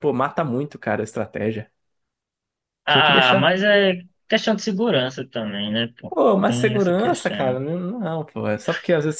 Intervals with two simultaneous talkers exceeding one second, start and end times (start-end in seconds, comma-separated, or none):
6.1-7.6